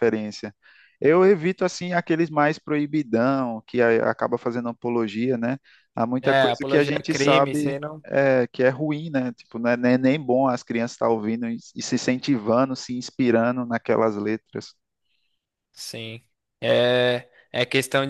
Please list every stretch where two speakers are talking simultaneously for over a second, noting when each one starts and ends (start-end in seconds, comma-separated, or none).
6.2-8.0